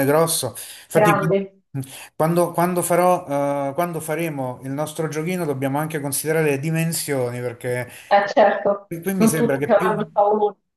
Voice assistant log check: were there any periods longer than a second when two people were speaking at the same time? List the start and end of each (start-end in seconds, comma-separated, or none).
8.1-9.9